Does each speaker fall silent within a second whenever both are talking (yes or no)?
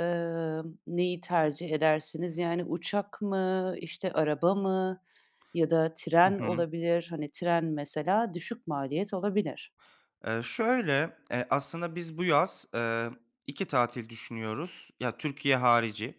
yes